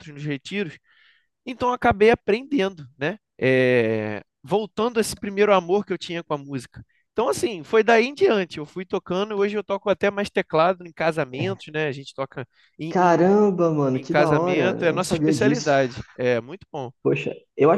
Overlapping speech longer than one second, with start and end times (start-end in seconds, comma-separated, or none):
13.9-15.7